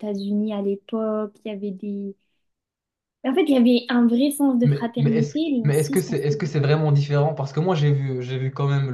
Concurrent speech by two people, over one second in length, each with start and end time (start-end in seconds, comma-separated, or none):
4.6-6.4